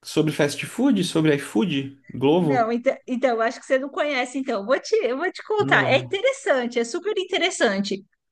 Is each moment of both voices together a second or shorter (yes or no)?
yes